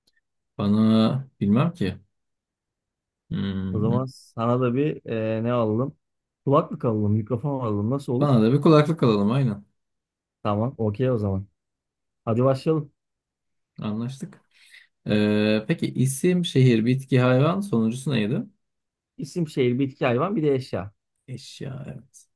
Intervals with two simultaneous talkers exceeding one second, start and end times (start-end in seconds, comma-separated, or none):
none